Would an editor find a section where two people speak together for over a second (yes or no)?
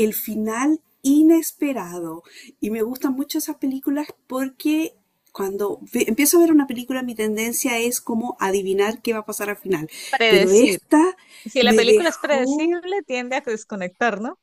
yes